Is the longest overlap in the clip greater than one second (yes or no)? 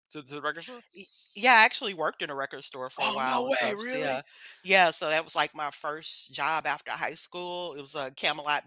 yes